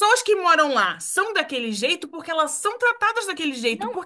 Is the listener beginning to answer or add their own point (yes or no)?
no